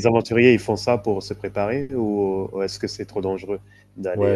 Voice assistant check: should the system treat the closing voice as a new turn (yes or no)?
yes